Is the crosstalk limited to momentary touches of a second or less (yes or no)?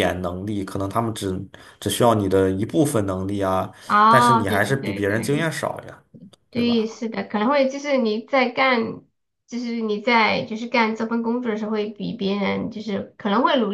no